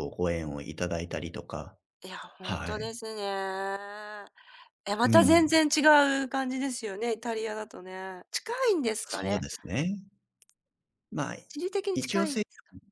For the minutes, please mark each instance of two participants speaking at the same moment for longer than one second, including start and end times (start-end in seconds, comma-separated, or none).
none